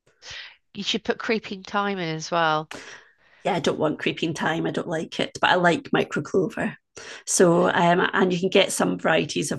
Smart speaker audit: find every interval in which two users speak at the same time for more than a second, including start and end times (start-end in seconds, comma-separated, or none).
none